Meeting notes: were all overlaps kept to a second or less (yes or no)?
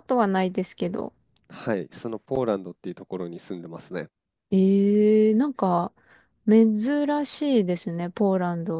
yes